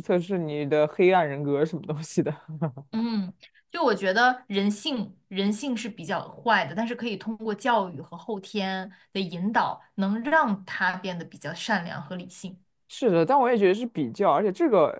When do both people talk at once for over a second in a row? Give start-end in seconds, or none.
none